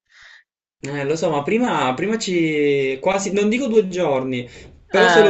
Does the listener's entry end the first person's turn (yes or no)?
no